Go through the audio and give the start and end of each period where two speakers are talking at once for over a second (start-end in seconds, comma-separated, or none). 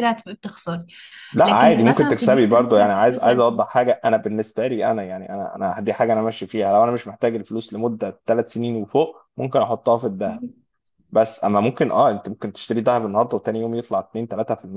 1.4-3.4